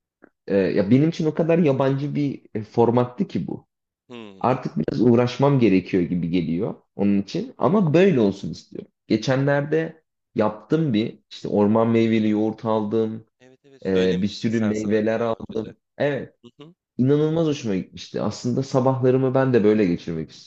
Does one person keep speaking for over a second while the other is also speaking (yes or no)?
yes